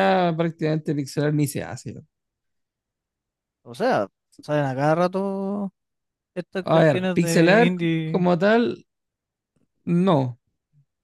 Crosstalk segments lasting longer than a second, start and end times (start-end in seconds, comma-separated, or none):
6.6-8.3